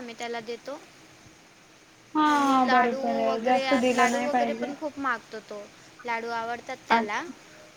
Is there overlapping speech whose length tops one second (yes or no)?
yes